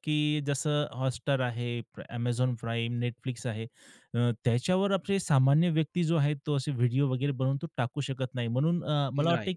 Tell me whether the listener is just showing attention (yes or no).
yes